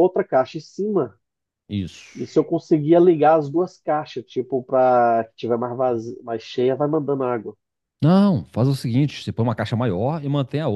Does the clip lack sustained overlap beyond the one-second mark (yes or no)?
yes